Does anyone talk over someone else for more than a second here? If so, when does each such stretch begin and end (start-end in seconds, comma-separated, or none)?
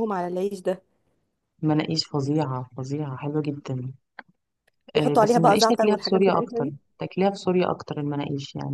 5.0-6.8